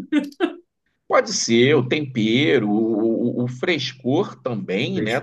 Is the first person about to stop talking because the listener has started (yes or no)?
no